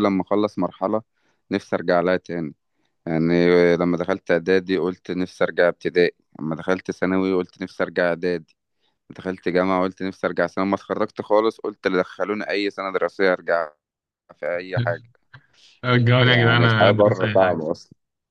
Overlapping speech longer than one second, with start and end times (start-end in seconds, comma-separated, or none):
16.2-17.6